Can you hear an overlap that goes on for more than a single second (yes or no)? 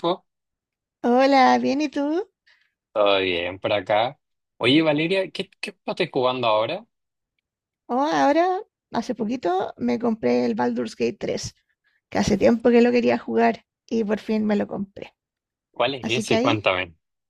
no